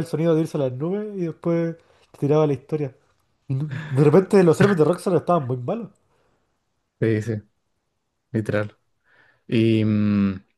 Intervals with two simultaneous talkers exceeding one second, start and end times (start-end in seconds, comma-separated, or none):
none